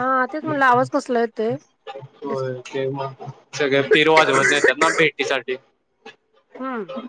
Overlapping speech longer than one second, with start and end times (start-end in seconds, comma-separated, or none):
none